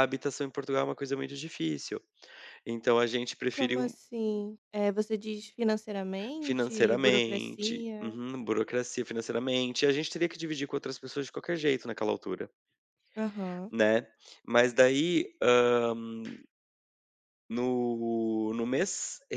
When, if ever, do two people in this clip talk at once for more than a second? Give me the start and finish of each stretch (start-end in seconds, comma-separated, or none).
6.4-8.2